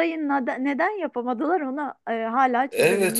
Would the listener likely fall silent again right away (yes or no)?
no